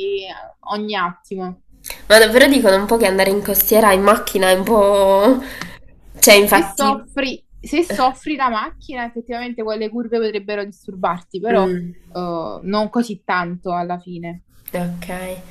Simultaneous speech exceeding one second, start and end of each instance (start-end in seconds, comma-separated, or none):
none